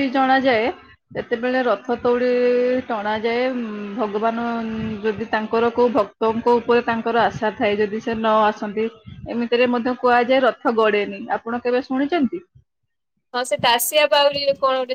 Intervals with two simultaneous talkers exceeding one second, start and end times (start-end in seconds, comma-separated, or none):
none